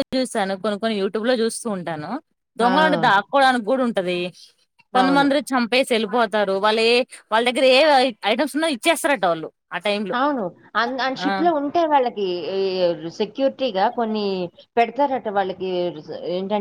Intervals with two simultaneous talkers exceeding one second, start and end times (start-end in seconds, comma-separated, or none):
none